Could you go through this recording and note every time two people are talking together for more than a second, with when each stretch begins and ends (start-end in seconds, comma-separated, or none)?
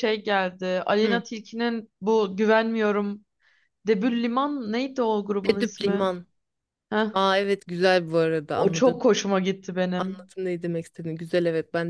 none